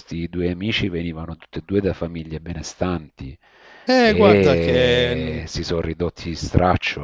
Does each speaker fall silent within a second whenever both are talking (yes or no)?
no